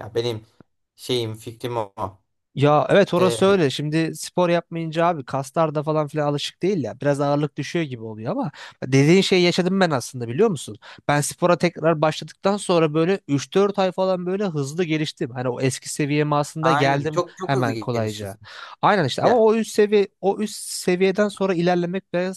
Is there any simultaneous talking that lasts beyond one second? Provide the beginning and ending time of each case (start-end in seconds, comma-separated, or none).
16.6-18.4